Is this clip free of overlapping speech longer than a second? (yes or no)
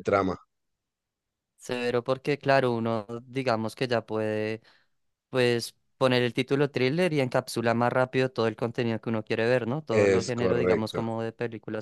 no